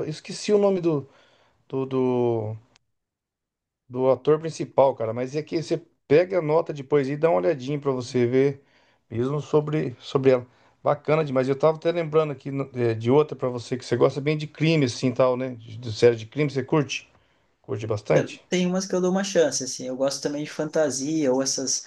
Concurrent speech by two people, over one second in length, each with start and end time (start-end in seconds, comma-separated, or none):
none